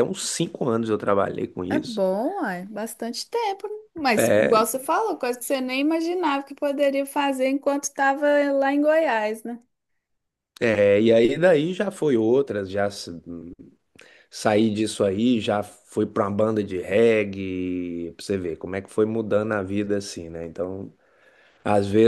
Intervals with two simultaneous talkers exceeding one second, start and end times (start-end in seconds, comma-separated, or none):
none